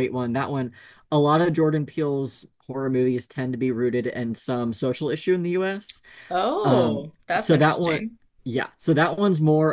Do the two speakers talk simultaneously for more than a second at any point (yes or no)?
yes